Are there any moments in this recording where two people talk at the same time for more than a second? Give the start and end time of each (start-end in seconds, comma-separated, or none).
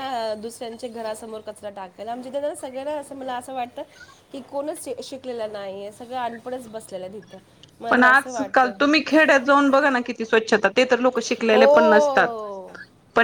11.5-12.7